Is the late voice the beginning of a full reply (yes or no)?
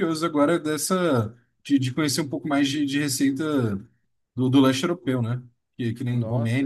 yes